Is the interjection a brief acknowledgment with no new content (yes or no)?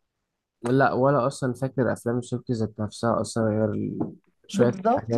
no